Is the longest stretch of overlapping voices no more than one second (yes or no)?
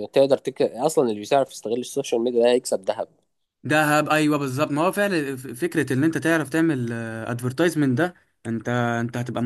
yes